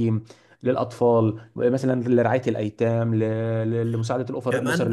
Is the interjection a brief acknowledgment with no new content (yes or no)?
no